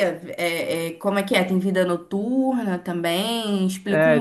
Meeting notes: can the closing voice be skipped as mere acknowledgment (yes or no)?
no